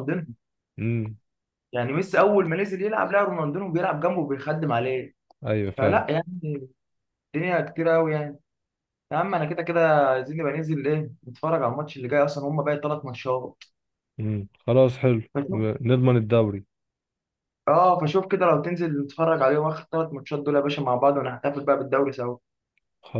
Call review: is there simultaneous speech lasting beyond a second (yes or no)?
no